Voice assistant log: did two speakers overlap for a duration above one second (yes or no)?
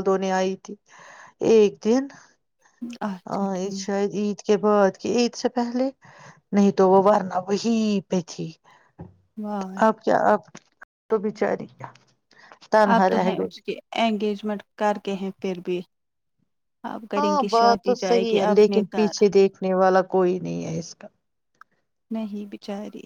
yes